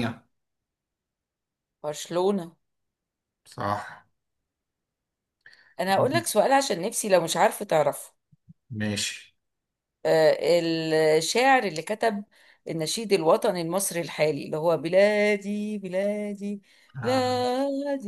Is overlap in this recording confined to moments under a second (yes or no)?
yes